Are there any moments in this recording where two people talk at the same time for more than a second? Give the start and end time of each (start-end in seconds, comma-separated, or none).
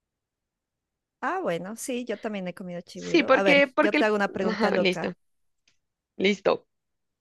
2.9-5.1